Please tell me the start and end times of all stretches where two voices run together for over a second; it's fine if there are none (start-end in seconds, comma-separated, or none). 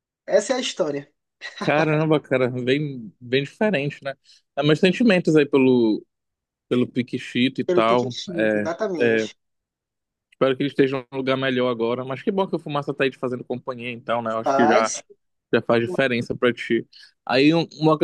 7.6-9.3